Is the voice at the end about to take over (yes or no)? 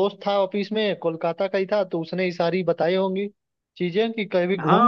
yes